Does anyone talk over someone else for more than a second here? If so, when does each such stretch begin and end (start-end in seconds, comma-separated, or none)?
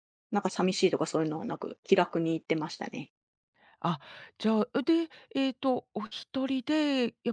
none